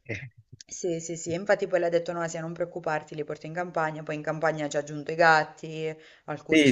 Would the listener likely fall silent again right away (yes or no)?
no